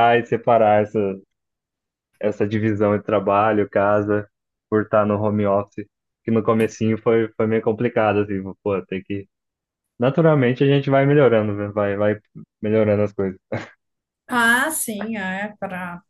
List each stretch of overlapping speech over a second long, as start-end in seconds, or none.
none